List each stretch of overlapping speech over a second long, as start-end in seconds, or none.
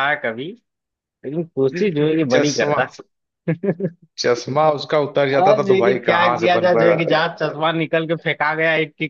5.3-7.2